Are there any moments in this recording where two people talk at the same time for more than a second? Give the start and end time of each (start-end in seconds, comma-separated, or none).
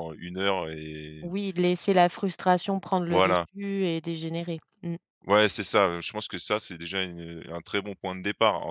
none